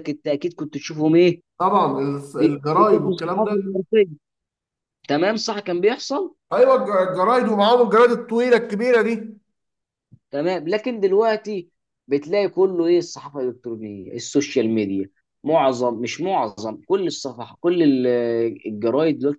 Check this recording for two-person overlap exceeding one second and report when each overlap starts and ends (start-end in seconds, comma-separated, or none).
2.3-3.6